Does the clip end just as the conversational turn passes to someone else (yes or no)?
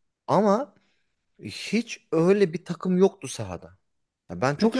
yes